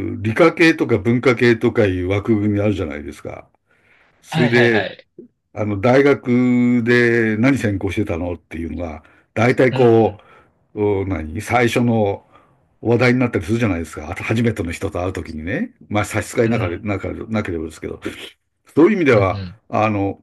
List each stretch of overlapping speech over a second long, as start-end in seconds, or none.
none